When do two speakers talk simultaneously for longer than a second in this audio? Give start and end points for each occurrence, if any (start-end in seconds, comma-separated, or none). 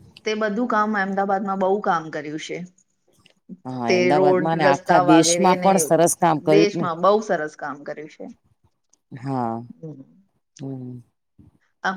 3.9-5.7